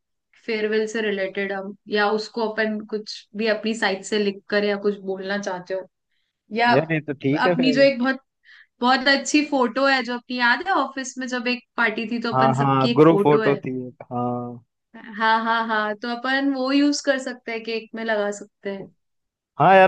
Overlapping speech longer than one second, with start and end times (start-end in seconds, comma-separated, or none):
12.3-13.6